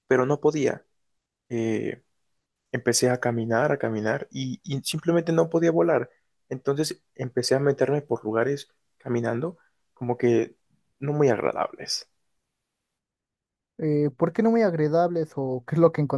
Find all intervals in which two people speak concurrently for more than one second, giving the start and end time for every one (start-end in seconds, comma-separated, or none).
none